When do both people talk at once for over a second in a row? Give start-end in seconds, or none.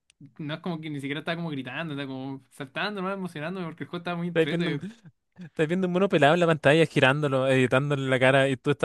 none